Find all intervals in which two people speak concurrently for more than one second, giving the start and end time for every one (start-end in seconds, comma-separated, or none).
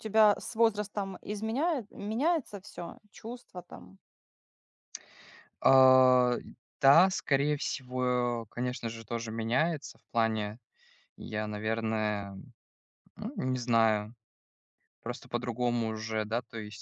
none